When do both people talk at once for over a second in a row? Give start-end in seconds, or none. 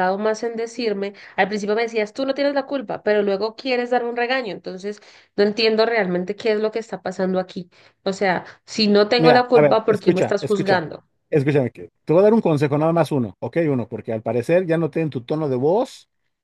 9.2-10.8